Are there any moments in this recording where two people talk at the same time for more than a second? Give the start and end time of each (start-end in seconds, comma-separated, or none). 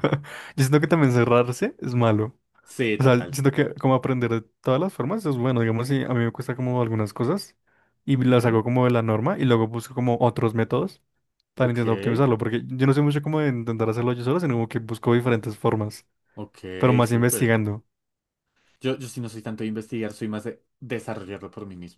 none